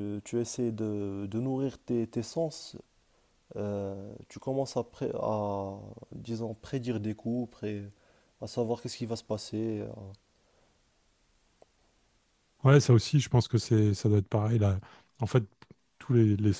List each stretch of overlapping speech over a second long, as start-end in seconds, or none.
none